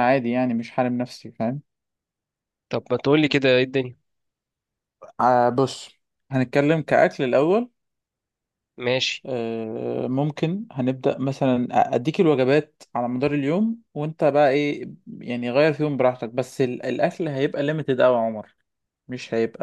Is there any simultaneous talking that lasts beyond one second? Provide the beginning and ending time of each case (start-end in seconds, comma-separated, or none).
none